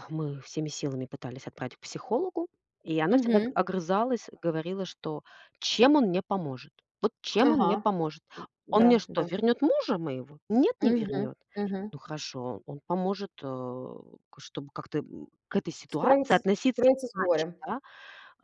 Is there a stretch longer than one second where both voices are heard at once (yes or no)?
yes